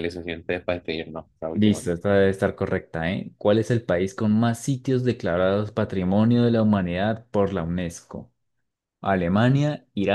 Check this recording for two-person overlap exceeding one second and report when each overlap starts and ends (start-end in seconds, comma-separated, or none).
none